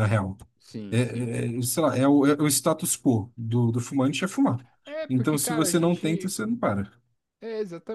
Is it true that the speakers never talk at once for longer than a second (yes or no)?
no